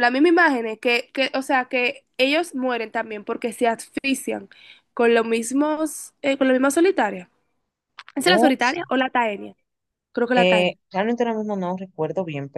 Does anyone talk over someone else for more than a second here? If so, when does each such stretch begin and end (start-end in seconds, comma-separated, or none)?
none